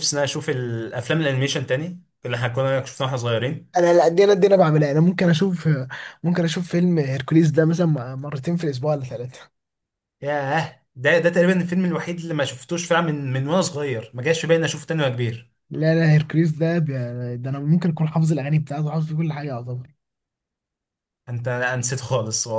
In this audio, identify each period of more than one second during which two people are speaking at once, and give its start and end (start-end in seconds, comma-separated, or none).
none